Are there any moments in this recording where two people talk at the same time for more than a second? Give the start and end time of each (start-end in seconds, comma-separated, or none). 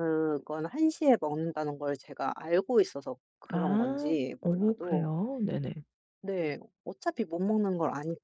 3.5-5.1